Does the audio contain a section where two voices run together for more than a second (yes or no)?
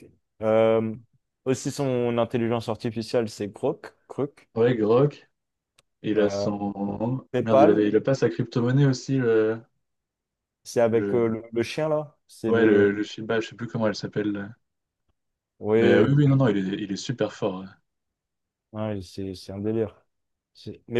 no